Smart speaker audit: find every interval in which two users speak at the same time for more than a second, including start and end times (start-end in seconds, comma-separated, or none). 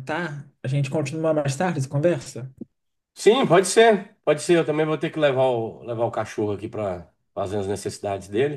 none